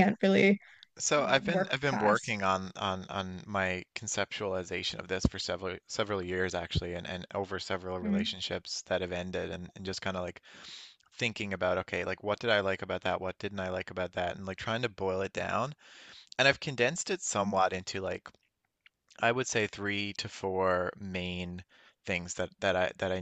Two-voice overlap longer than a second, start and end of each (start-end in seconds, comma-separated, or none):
1.2-2.4